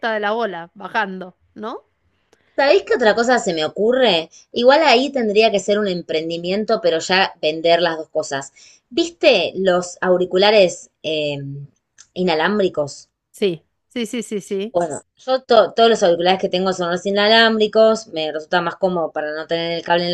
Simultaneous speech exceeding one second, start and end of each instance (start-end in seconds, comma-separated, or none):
none